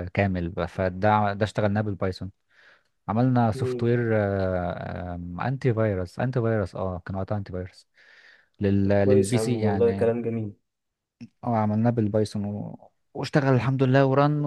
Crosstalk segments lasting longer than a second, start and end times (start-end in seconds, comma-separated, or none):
8.8-10.1